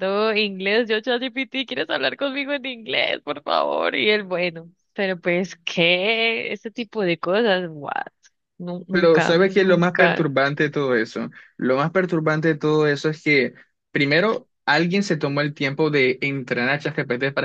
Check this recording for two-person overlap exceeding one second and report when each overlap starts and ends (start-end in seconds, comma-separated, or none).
8.9-10.3